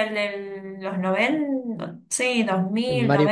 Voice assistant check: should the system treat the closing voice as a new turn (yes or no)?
yes